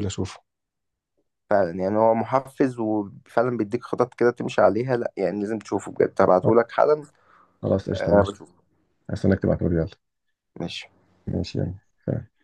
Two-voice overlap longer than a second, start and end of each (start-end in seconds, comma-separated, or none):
none